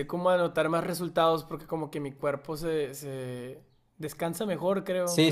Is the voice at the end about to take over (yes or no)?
yes